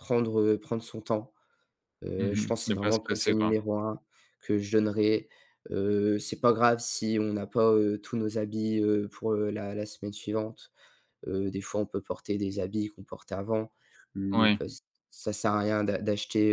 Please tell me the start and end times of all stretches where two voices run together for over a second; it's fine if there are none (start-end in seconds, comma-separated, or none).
2.2-3.5